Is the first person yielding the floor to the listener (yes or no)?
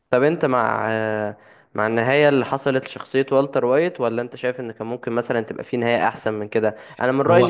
no